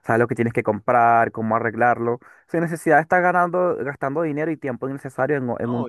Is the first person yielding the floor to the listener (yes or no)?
yes